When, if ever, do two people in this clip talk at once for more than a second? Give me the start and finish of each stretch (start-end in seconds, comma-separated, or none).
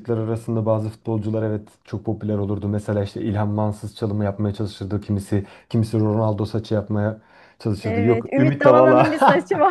7.8-9.1